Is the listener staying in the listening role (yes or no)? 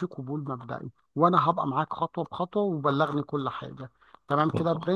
no